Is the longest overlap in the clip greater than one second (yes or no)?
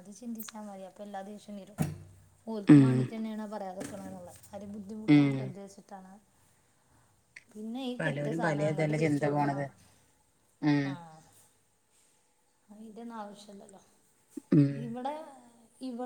yes